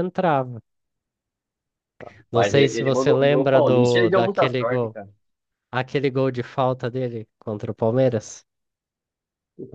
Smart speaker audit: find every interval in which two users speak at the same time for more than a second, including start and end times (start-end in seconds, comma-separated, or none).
2.3-5.0